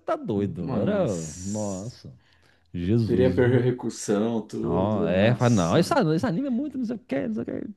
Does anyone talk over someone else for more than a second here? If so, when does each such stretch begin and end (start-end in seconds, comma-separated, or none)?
0.6-2.0, 4.6-6.0